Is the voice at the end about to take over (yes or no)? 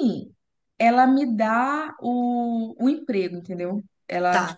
no